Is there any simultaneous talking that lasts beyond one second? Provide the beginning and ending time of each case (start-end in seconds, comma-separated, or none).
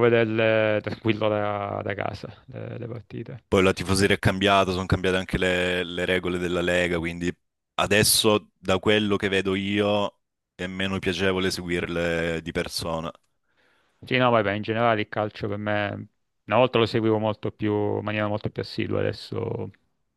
none